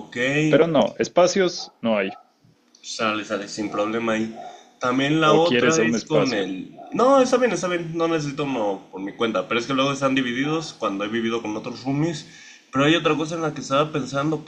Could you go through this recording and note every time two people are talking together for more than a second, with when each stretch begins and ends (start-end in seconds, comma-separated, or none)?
5.2-6.5